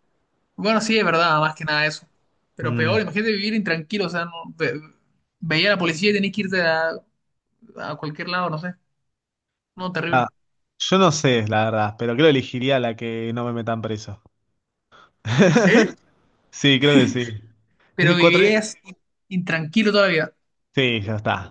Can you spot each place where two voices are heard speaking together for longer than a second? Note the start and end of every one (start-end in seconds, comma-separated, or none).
none